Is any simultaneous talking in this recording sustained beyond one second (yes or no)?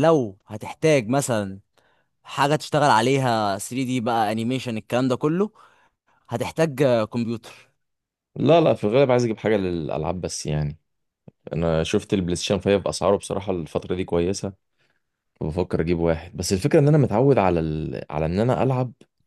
no